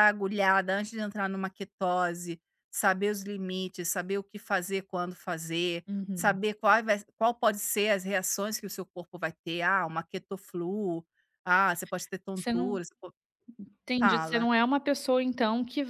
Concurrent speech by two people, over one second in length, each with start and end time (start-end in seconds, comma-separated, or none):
none